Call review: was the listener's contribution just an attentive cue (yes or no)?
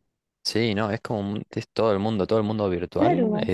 yes